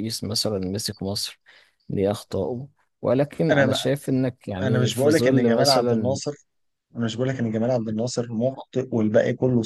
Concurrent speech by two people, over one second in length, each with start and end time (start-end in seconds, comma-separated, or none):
4.6-6.2